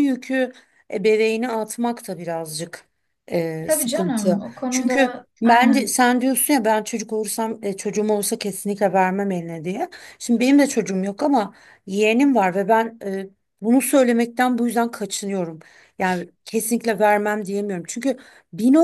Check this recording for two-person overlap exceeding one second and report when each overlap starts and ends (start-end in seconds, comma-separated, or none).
3.6-5.9